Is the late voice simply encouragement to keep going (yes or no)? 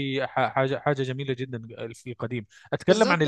no